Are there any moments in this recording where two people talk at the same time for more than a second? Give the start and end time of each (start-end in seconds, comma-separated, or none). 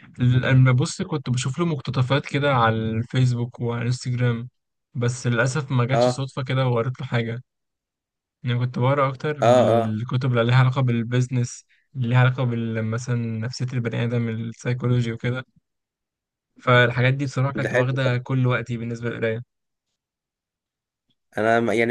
none